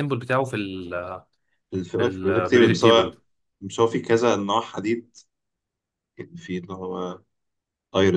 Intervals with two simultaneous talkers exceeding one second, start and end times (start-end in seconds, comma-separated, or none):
2.0-3.2